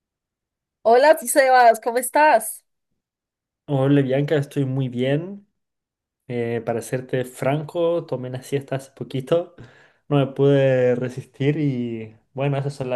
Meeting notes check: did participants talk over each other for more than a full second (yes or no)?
no